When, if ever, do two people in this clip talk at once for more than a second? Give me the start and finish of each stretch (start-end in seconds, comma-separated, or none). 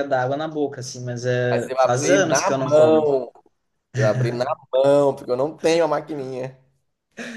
1.5-3.0